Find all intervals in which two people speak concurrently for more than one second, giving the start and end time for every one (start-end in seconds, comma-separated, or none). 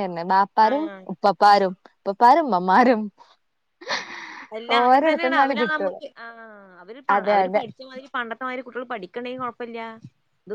none